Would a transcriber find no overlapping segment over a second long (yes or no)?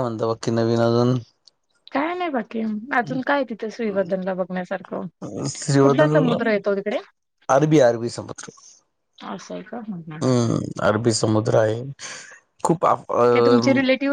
yes